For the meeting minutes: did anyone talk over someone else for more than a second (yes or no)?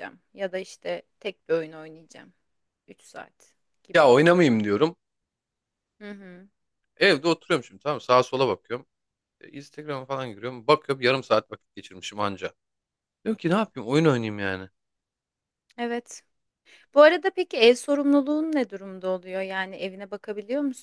no